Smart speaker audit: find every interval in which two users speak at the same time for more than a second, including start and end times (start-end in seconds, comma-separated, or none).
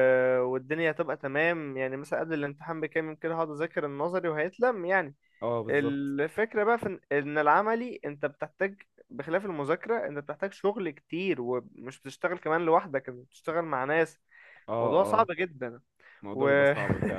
none